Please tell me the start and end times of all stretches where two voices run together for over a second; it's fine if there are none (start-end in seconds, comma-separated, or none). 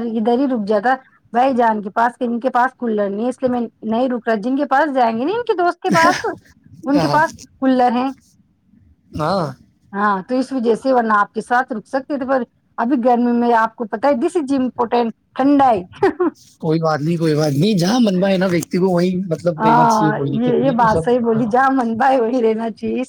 19.6-21.4